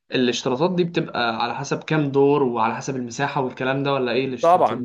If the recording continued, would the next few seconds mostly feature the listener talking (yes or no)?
yes